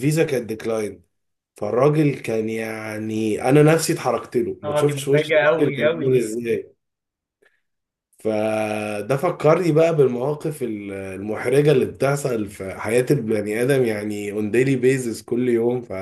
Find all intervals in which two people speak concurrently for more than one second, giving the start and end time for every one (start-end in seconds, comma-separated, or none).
4.6-6.3